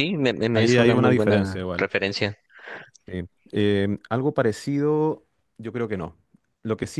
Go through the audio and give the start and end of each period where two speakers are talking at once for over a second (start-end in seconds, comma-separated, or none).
0.5-1.9